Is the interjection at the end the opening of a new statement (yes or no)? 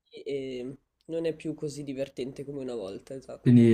yes